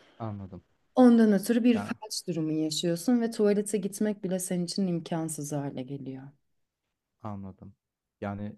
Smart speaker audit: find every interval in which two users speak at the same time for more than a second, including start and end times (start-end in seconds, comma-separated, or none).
none